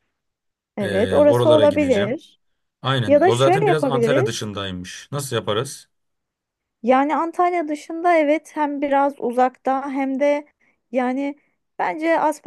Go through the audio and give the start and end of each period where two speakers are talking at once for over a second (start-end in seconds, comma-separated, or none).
0.8-2.2, 3.1-4.5